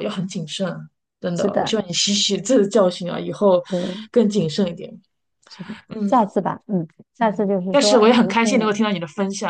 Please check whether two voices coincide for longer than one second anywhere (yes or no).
yes